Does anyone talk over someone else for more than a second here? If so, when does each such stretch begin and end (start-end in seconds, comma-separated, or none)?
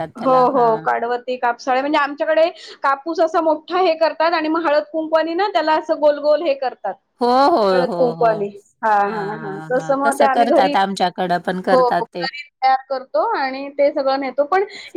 9.1-10.7